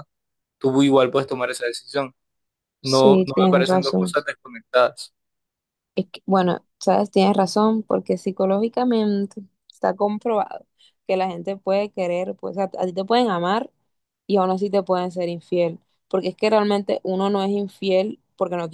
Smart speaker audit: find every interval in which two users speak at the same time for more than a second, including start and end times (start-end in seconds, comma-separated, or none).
2.8-4.2